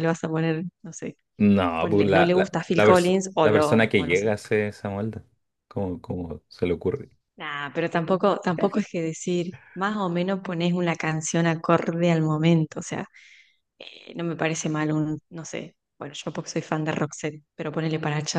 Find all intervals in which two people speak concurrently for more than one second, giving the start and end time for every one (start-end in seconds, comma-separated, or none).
1.8-4.3